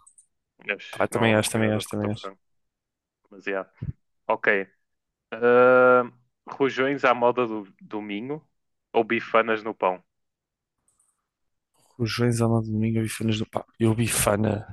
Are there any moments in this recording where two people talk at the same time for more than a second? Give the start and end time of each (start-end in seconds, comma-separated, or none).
0.9-2.3